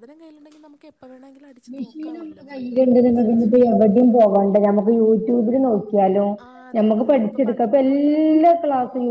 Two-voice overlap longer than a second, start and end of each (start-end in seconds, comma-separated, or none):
6.8-8.3